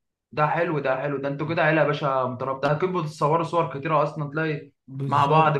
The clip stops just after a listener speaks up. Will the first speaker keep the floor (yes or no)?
no